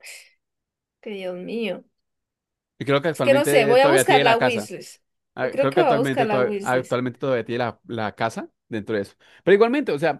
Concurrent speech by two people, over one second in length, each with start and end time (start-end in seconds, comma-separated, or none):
3.1-4.7, 5.4-7.0